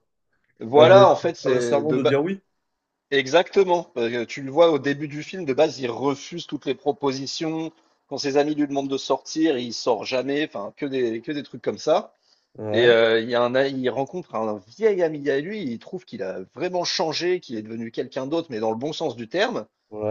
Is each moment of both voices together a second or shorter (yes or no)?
no